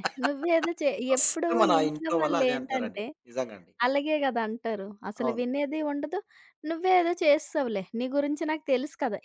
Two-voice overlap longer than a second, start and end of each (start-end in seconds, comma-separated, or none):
1.1-3.0